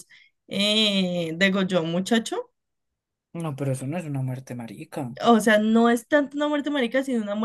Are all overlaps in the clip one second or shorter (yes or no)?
yes